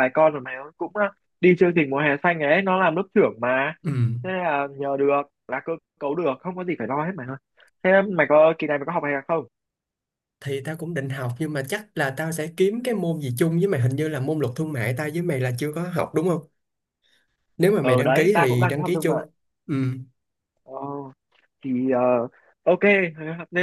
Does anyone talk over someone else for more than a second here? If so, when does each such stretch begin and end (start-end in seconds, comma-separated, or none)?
17.8-19.2